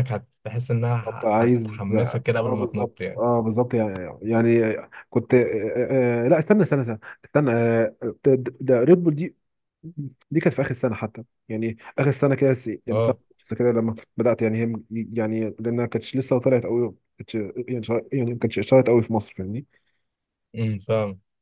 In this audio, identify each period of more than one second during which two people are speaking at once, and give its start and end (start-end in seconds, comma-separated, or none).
1.0-3.2